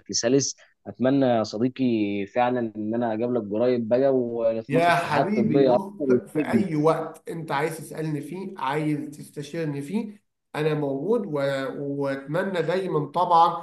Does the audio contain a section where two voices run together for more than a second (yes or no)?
yes